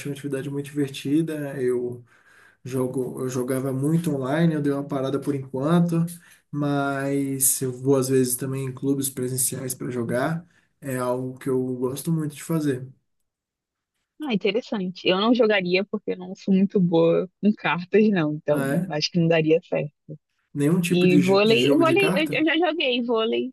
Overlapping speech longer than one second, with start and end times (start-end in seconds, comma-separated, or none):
20.9-22.5